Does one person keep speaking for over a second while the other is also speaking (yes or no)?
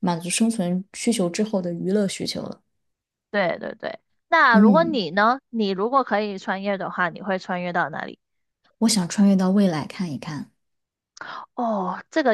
no